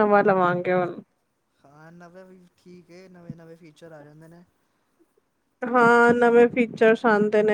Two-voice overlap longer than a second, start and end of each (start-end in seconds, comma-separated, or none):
none